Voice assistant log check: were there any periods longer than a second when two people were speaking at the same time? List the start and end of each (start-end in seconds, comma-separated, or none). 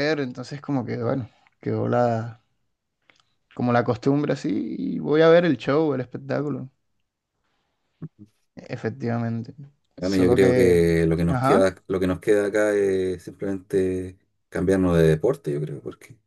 10.0-11.7